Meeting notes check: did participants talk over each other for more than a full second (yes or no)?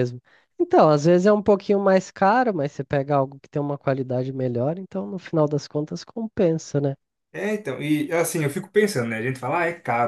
no